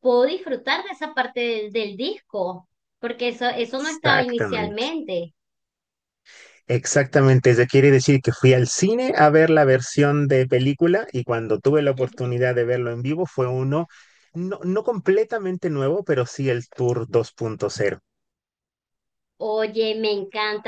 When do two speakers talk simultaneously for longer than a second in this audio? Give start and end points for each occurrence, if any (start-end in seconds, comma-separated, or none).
3.6-4.9